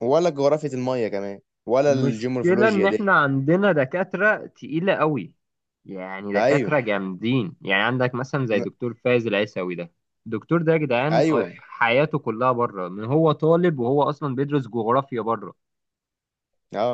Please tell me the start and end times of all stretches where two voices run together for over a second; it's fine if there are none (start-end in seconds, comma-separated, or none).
1.9-3.2